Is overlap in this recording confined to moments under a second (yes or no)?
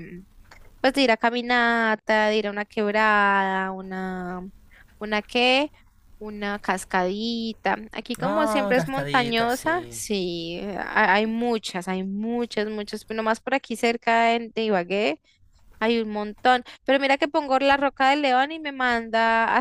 no